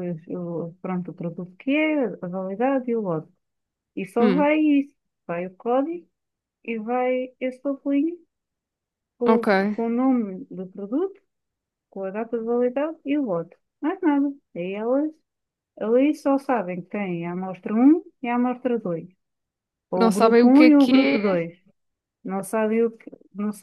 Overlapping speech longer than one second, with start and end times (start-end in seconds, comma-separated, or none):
20.0-21.4